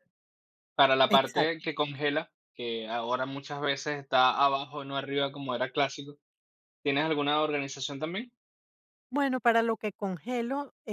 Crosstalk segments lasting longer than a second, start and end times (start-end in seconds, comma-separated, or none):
none